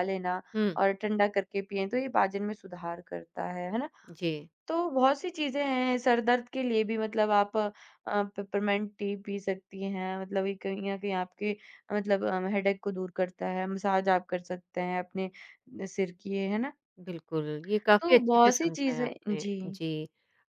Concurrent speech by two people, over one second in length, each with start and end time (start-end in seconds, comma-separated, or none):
18.0-19.6